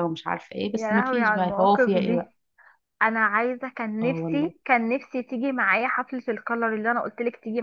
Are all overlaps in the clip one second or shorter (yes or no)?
no